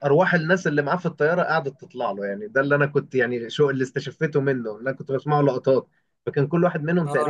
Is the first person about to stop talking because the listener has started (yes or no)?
no